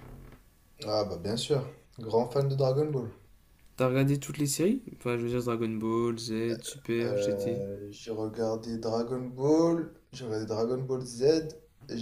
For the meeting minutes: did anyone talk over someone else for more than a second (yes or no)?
no